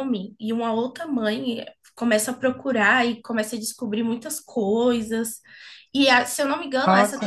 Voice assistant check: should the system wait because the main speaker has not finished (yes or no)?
yes